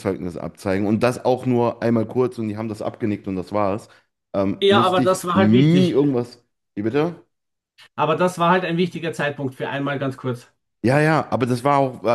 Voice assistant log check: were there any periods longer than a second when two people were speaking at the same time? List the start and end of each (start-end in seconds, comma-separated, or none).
4.6-6.0